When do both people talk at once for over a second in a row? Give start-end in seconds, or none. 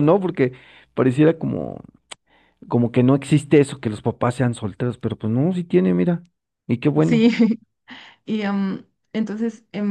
none